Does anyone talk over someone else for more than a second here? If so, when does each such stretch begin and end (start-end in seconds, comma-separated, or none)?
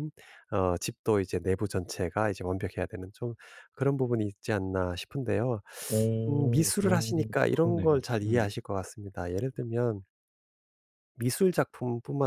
6.3-8.5